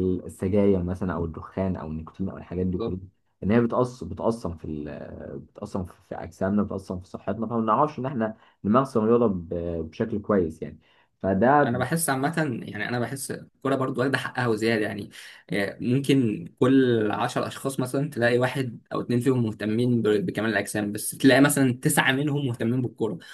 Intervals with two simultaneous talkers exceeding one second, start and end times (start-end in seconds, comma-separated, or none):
none